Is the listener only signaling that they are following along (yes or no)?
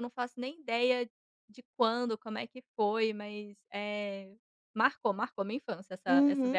no